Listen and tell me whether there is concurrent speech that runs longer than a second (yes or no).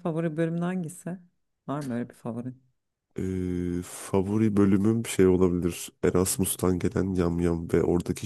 no